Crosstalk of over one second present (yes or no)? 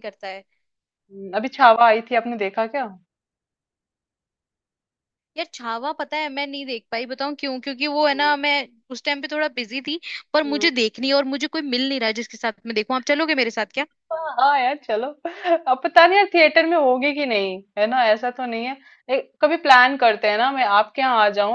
no